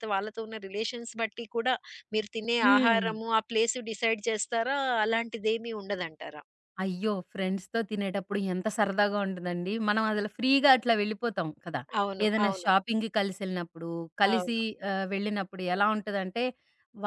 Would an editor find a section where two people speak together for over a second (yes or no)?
no